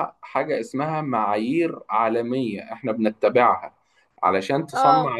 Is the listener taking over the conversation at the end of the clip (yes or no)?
no